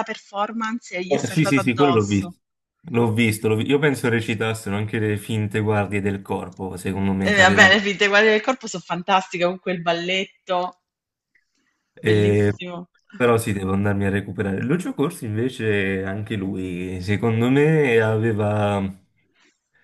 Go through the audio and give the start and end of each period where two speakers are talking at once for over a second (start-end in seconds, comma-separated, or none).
1.1-2.3